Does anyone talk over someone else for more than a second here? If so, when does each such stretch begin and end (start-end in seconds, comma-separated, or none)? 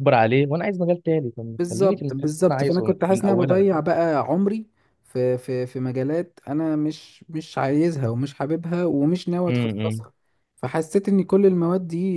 1.6-3.7